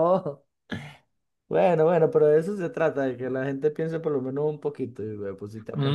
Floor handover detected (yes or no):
yes